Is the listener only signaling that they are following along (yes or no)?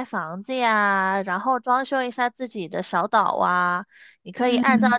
yes